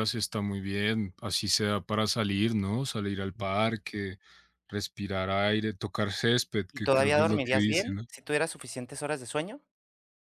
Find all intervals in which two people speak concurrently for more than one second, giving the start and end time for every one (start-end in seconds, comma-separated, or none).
6.7-8.0